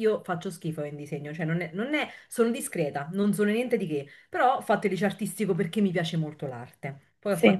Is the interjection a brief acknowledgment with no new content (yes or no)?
yes